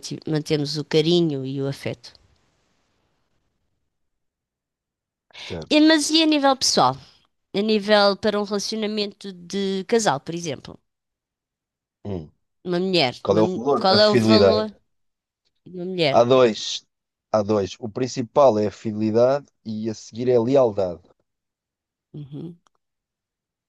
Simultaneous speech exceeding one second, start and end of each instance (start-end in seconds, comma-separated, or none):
13.2-14.7